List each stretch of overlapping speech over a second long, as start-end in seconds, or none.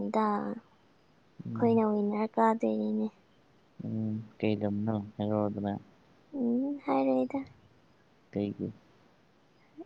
none